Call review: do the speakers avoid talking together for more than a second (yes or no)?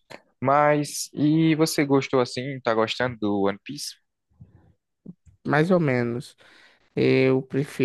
yes